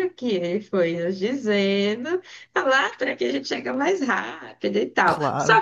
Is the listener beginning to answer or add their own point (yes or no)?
yes